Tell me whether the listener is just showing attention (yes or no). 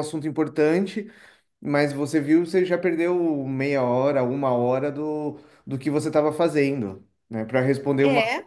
yes